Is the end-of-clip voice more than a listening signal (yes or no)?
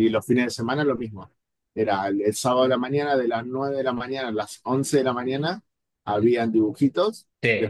no